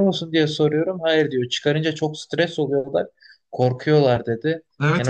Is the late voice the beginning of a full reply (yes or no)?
yes